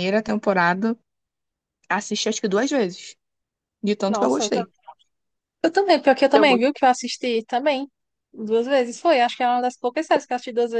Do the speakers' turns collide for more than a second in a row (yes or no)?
no